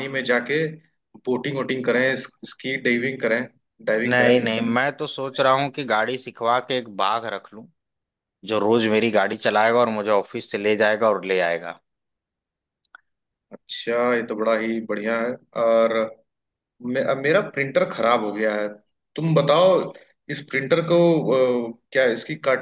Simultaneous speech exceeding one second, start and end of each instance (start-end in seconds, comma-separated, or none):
none